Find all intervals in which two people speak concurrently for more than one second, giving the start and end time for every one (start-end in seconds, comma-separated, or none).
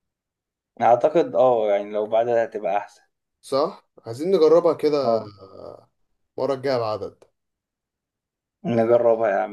none